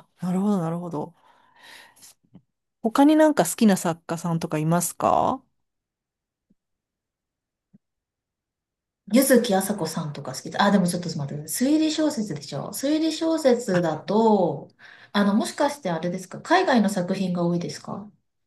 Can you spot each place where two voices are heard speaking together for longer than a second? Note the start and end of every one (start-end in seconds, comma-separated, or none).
none